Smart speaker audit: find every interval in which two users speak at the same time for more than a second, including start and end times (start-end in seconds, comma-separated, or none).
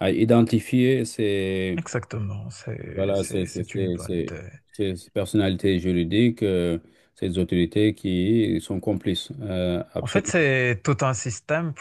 2.9-4.3